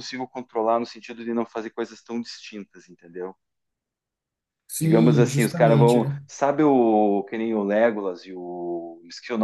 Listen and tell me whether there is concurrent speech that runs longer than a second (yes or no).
yes